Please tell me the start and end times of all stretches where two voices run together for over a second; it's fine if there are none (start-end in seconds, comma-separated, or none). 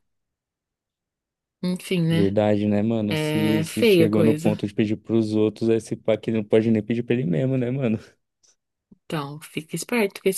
3.1-4.5